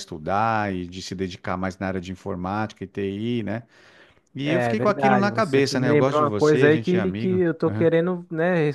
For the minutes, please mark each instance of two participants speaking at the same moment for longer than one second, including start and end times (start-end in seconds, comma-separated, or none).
4.4-7.4